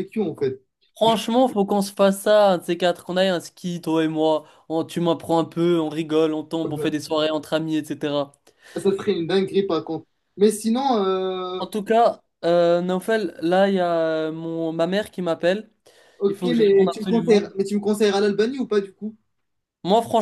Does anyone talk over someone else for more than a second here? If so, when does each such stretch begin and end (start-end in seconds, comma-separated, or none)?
16.3-17.5